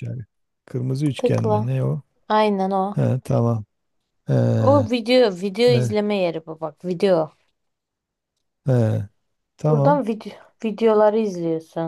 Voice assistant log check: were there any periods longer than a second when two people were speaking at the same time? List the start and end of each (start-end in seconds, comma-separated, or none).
none